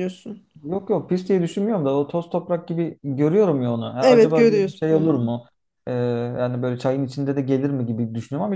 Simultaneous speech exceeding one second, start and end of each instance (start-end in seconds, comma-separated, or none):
4.0-5.3